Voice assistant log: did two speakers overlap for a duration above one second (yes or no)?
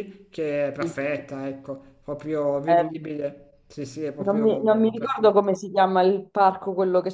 yes